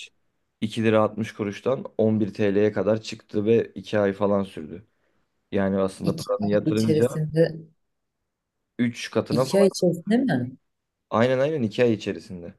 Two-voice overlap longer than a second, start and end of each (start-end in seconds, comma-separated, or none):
6.0-7.2